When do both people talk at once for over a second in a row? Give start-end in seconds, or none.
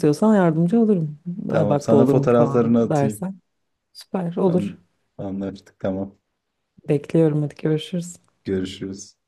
1.5-3.3